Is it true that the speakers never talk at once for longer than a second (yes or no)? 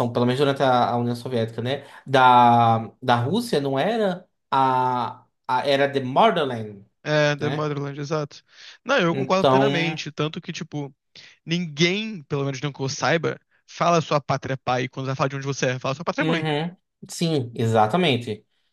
yes